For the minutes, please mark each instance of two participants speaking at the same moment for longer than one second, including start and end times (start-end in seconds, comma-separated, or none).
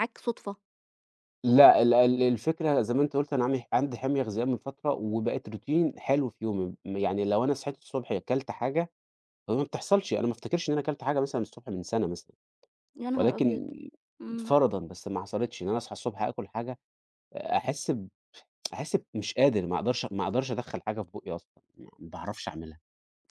none